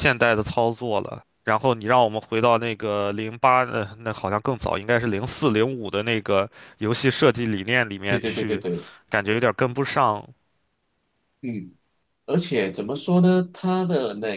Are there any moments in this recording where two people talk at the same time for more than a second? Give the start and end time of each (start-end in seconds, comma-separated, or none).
none